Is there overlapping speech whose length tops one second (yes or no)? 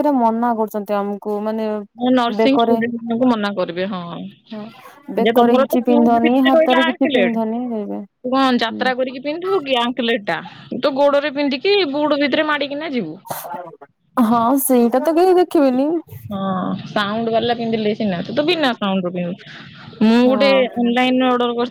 yes